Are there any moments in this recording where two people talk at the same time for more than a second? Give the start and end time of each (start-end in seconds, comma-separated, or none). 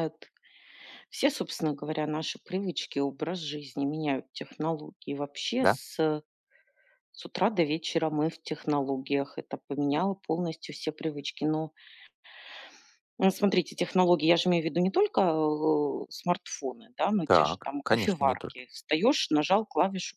17.2-18.6